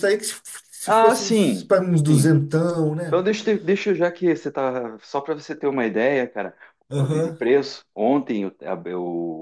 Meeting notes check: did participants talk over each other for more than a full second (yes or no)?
yes